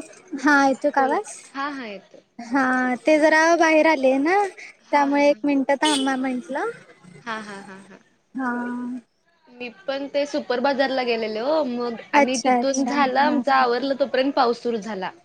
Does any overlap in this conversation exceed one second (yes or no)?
yes